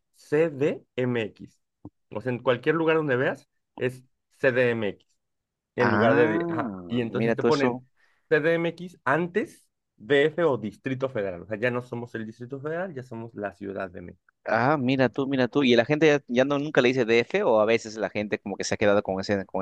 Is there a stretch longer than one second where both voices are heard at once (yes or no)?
yes